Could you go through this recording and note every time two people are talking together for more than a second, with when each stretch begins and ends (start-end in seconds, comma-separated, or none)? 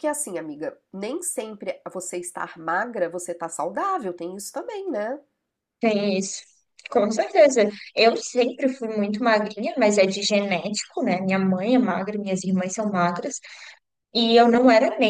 none